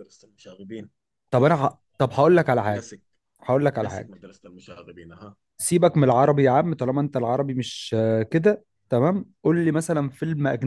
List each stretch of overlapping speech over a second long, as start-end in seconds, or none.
none